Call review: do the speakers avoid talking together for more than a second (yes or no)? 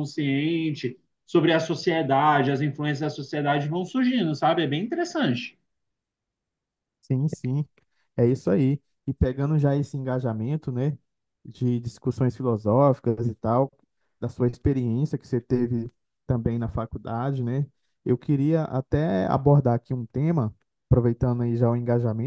yes